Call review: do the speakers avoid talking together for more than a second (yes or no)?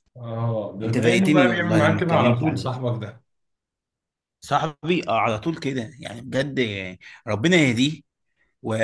no